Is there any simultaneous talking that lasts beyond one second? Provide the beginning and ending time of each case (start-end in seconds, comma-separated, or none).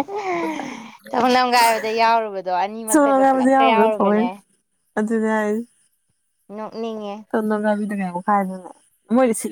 2.9-4.3